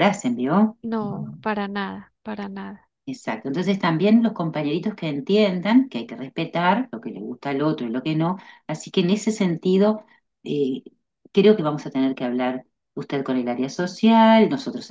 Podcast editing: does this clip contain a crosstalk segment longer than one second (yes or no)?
no